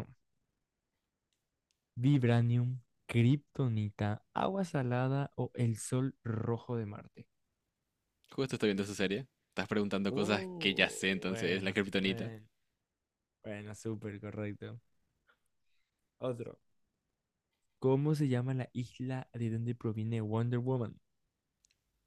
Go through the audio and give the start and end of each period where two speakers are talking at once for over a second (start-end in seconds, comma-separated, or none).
10.1-12.3